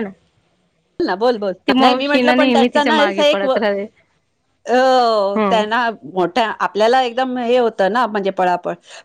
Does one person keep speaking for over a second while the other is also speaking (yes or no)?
yes